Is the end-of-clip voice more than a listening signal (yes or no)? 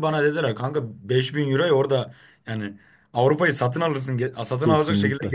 yes